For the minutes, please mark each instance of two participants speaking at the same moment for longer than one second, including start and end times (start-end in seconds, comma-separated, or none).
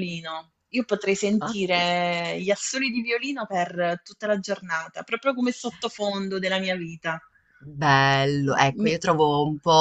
none